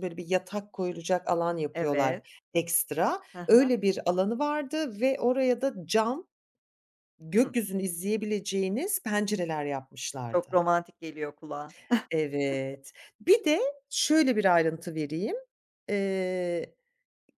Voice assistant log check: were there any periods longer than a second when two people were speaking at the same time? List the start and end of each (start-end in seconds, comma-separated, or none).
none